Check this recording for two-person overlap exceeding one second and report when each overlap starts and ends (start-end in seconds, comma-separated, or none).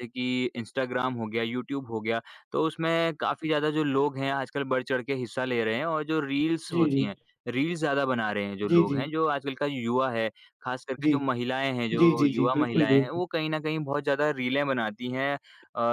12.0-13.2